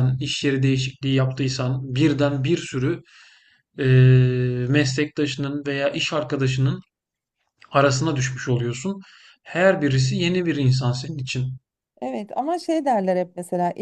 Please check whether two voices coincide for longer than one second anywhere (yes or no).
no